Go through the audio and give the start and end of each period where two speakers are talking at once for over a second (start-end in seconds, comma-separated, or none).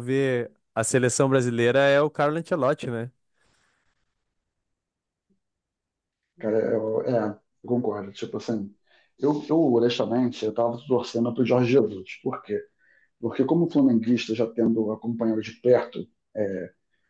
none